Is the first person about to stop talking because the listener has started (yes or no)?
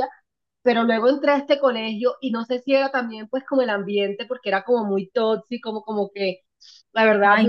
no